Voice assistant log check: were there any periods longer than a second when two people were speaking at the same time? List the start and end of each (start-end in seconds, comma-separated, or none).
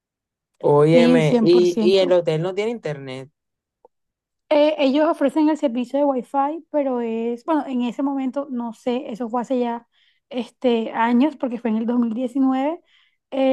0.9-2.2